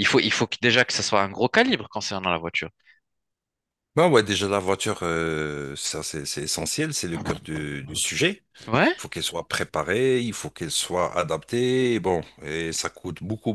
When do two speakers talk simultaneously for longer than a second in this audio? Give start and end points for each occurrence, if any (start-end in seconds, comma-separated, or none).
none